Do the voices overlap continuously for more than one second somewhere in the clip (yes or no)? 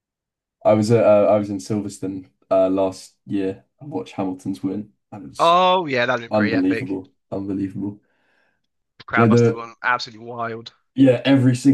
no